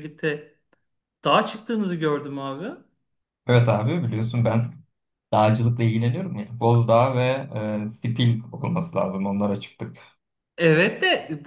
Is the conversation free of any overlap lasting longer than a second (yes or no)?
yes